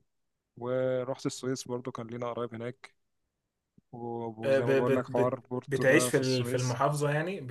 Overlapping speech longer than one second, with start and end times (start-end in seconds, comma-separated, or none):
4.4-6.8